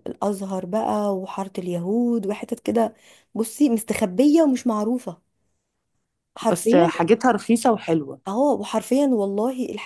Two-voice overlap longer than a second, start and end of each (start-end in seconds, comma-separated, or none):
none